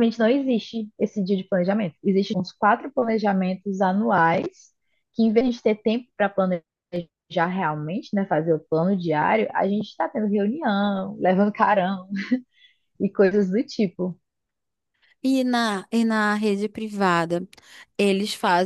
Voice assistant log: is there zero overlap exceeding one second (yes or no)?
yes